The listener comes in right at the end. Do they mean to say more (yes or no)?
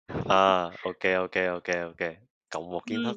yes